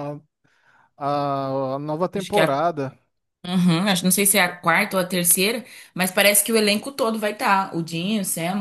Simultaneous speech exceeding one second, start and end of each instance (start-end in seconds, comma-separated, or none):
none